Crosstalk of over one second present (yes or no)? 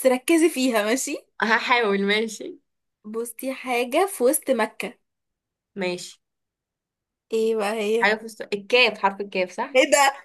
no